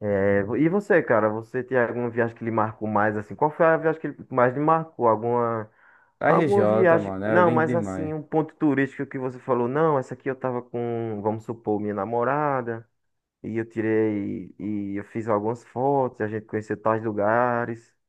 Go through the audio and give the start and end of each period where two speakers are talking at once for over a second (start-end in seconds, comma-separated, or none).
6.2-8.1